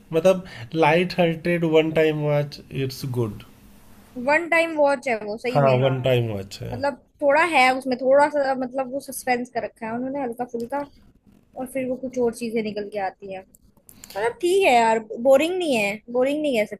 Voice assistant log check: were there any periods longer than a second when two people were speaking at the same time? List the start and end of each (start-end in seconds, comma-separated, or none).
none